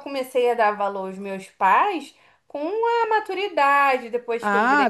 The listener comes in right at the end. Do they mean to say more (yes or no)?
yes